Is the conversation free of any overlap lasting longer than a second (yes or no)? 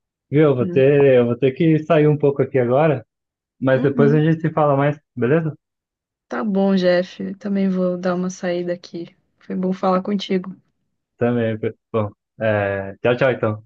yes